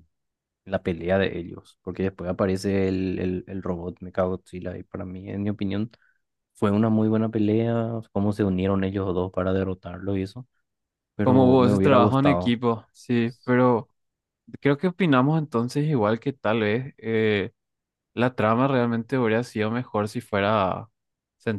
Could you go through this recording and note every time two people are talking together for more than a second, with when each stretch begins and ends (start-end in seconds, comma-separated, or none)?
11.2-12.6